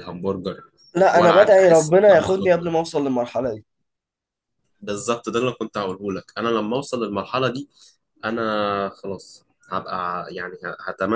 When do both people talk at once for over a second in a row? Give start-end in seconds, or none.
1.1-2.8